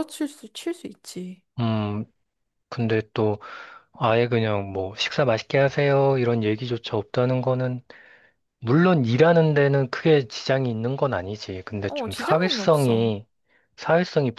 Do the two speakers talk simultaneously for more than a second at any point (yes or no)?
yes